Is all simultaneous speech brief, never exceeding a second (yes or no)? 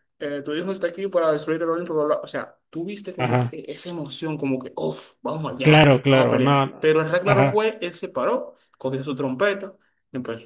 no